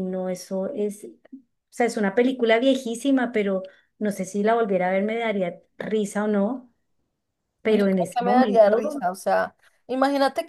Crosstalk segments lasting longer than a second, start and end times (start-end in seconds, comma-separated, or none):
7.7-9.0